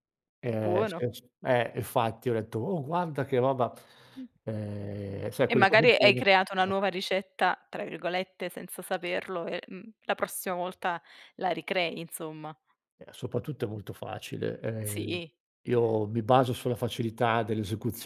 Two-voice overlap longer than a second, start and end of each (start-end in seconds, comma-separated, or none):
5.4-6.9